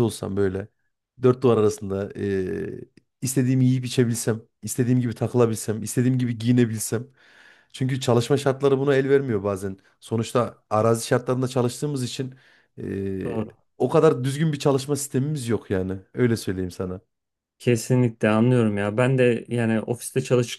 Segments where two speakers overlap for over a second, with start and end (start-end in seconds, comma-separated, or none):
none